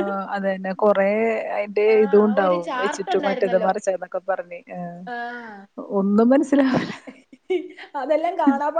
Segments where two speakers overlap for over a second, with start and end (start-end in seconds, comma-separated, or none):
1.9-3.7